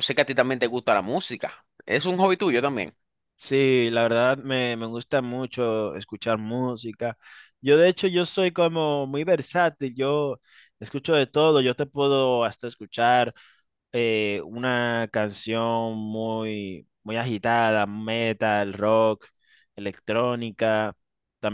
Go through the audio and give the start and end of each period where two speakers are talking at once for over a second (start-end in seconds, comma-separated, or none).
none